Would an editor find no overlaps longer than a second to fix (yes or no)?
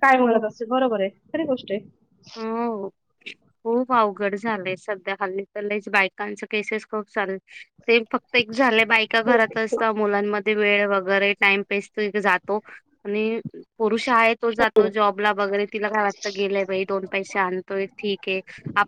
yes